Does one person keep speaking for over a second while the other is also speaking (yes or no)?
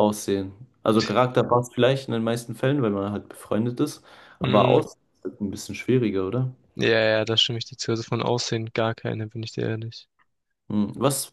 no